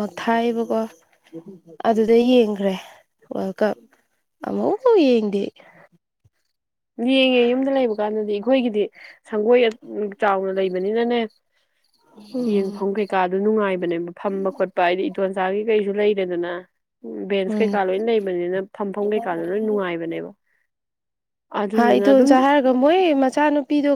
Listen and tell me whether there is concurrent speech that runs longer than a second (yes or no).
no